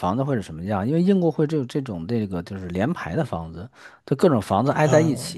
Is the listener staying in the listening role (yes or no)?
yes